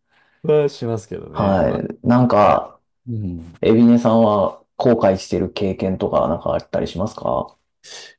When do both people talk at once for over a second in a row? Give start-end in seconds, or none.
none